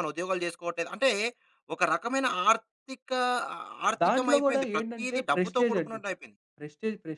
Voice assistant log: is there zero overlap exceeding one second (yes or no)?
no